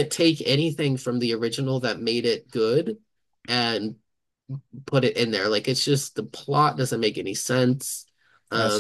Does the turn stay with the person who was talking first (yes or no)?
no